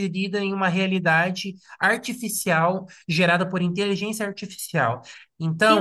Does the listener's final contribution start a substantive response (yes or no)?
no